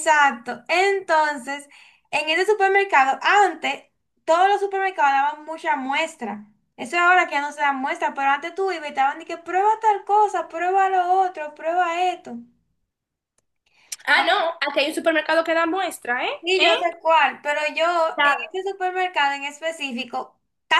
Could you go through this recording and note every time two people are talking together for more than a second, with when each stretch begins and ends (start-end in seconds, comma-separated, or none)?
none